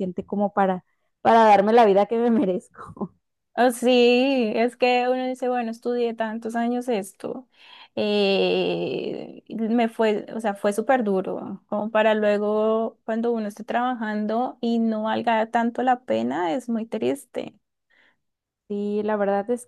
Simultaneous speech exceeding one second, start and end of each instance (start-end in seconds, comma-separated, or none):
none